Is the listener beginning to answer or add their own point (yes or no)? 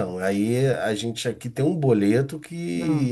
no